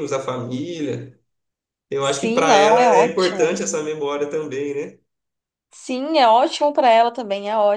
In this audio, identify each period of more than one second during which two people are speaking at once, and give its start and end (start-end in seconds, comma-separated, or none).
2.0-3.6